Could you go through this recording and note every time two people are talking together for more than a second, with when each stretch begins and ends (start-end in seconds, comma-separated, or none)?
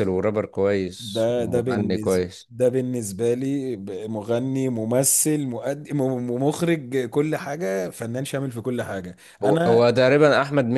1.0-2.5